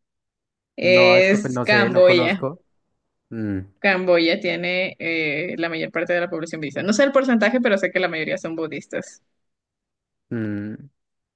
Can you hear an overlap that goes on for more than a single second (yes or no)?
yes